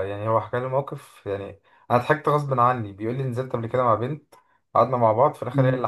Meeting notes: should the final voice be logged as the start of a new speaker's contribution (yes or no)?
no